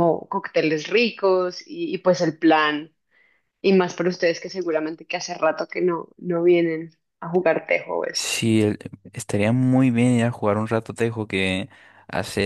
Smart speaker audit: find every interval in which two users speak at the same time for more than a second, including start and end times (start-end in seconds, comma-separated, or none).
none